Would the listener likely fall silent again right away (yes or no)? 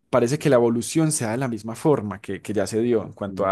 yes